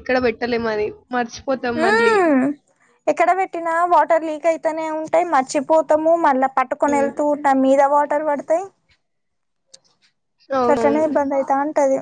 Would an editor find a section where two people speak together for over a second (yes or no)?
no